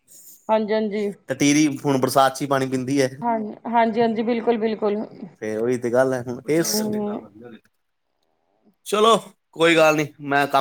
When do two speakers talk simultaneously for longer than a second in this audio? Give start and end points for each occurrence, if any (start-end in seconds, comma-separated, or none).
none